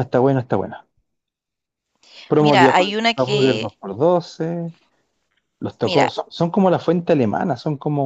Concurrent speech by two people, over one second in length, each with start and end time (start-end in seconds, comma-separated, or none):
2.4-3.7